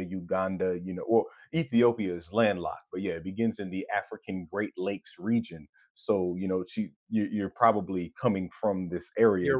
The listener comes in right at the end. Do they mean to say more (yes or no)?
yes